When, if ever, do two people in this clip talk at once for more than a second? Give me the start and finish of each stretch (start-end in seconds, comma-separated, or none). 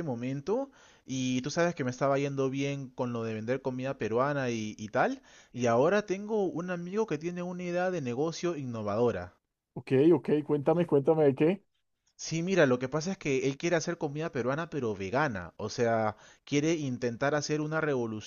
none